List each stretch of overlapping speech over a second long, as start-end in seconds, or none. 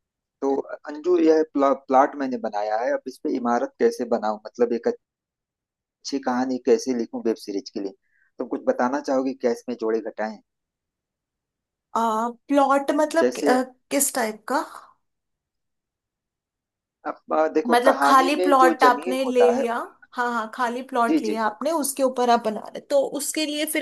17.7-19.6